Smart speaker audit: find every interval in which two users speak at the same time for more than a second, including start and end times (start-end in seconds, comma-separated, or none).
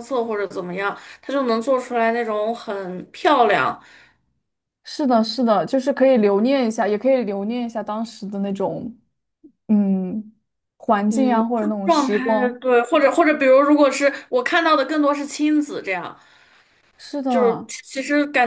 11.1-12.6